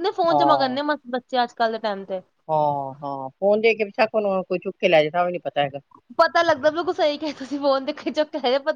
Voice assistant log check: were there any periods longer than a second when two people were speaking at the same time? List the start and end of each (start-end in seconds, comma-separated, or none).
none